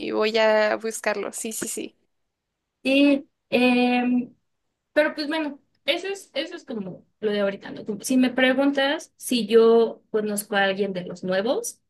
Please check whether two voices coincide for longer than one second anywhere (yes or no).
no